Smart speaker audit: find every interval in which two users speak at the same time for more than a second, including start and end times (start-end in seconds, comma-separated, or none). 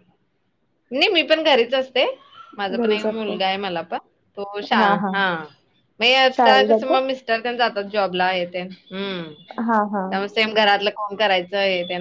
none